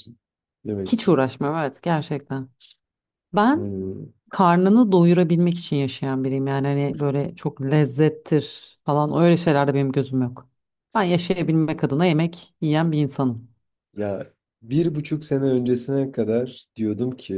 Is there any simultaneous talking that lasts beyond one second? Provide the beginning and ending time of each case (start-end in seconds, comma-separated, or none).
none